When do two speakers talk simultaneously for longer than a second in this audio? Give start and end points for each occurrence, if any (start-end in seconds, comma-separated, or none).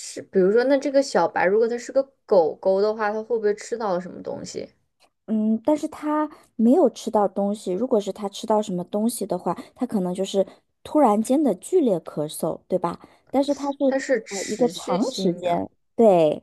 14.3-15.6